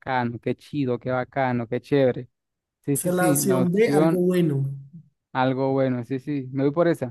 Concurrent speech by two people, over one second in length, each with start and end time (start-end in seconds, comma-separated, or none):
2.9-4.3